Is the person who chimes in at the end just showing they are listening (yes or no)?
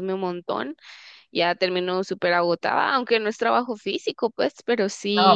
no